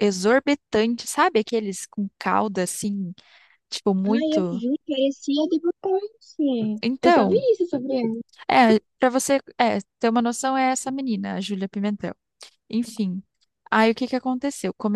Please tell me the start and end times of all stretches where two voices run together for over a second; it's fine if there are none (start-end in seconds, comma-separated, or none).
none